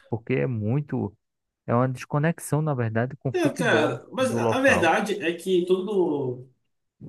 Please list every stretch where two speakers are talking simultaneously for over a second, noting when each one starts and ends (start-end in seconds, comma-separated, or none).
3.3-4.9